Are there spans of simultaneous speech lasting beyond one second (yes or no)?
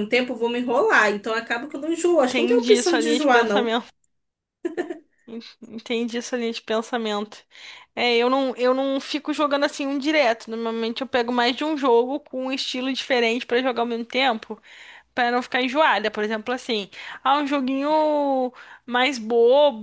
yes